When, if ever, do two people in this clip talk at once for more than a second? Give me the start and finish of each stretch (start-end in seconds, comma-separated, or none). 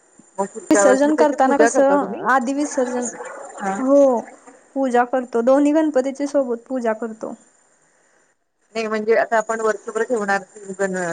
0.7-2.2